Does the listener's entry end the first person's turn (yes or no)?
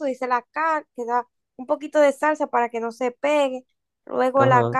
yes